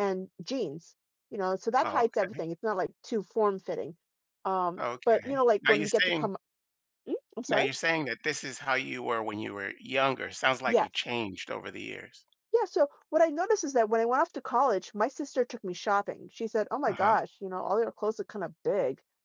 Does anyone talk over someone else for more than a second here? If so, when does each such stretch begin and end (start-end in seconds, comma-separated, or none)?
4.8-6.3